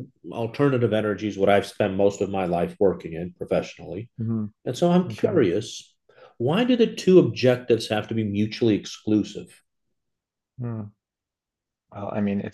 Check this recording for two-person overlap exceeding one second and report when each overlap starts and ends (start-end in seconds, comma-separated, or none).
none